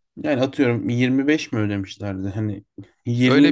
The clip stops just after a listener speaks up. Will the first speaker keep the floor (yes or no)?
no